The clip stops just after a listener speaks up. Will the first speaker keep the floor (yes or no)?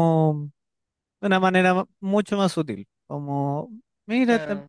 yes